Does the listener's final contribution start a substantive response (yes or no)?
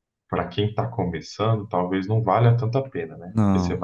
no